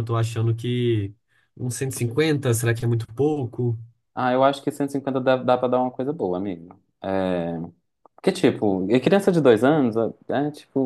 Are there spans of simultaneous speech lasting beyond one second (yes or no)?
no